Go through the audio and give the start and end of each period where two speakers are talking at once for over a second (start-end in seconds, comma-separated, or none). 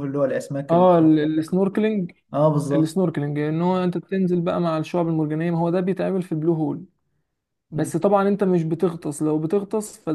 none